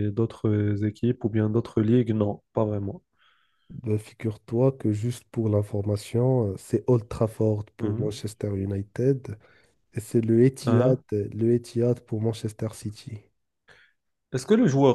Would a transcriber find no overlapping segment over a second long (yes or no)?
yes